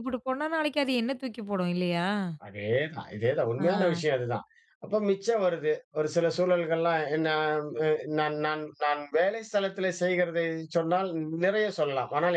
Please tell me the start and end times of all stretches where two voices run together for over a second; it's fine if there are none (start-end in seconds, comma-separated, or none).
none